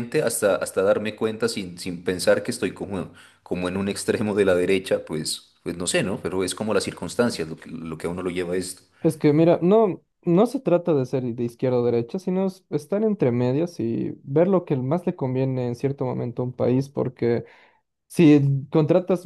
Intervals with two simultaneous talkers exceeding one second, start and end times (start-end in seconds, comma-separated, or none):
none